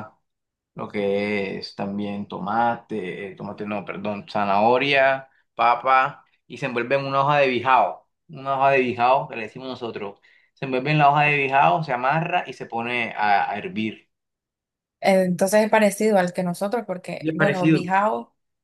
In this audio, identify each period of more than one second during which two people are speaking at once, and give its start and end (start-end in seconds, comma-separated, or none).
none